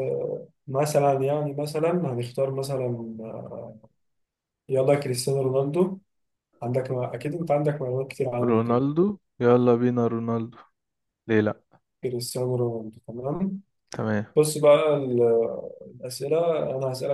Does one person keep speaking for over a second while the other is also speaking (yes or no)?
no